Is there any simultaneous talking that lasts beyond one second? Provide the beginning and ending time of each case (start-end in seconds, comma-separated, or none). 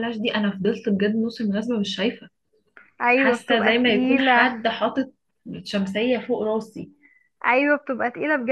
3.1-4.6